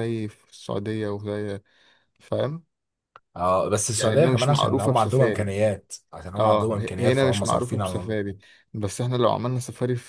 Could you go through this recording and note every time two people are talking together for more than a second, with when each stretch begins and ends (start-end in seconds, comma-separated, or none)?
4.0-5.5, 6.4-8.3